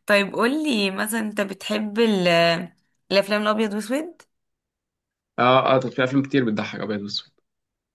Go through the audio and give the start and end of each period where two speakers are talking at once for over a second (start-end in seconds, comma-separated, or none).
none